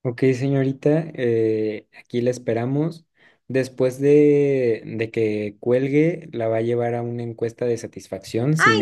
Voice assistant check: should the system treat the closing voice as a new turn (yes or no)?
yes